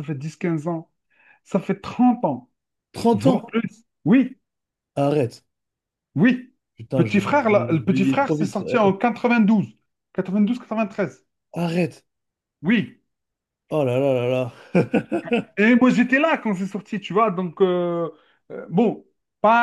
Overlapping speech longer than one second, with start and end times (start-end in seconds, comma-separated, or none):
6.9-8.9